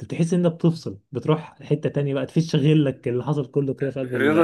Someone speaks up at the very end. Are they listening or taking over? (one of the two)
taking over